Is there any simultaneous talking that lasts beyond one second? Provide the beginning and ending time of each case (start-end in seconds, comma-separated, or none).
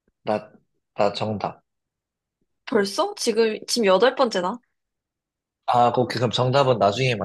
none